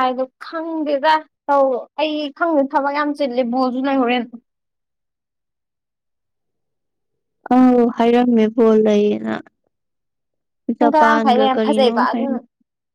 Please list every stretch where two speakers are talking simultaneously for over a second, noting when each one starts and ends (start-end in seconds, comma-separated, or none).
10.8-12.4